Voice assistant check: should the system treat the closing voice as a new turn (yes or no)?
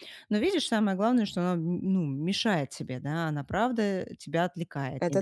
no